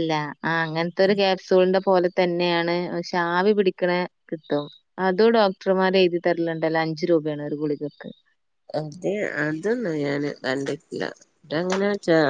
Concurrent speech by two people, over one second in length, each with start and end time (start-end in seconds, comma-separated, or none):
none